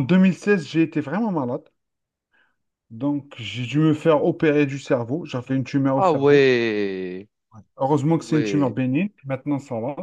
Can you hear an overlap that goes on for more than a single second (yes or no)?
no